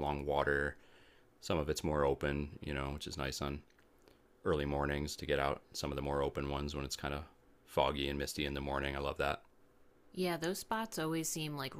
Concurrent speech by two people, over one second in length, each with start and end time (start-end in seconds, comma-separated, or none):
none